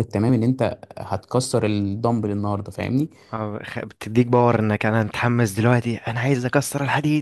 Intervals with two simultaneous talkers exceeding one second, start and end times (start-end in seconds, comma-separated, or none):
none